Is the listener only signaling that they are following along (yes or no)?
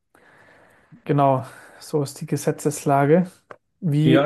no